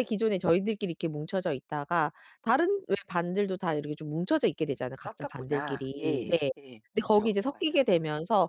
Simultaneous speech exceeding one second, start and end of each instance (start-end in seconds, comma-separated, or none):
5.0-7.8